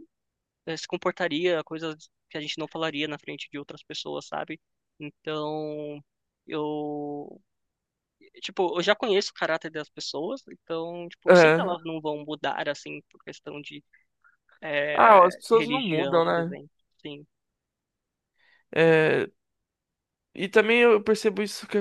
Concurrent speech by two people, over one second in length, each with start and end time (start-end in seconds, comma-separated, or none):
14.9-16.6